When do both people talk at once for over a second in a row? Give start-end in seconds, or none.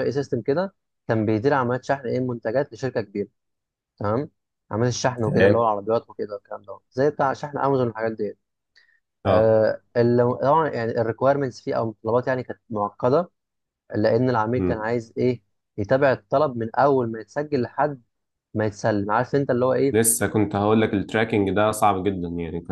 none